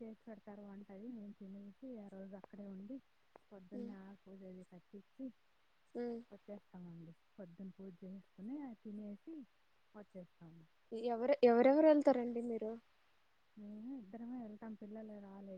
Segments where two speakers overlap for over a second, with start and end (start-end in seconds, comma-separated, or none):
none